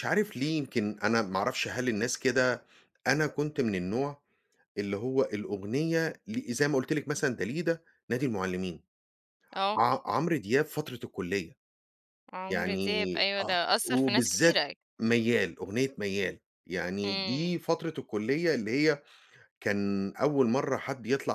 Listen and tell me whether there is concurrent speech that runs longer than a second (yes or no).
yes